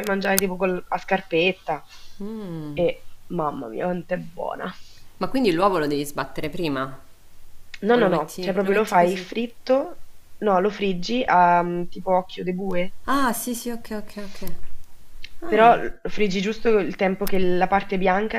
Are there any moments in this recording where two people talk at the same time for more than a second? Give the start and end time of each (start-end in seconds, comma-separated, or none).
7.9-9.3